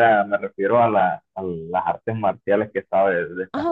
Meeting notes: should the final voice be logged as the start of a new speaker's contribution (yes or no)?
yes